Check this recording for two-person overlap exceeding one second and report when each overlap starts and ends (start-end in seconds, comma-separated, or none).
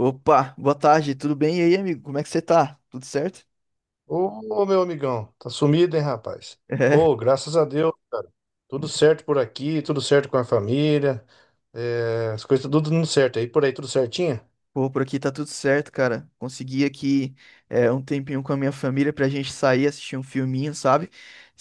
none